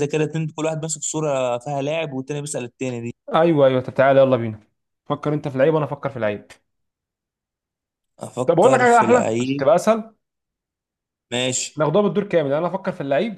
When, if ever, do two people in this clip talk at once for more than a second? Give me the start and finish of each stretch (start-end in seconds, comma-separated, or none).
8.5-9.7